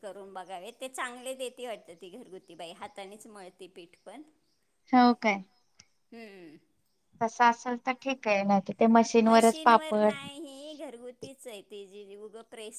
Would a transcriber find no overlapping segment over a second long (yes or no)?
yes